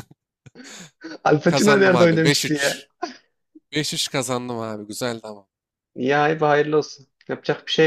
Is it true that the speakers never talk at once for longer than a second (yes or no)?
no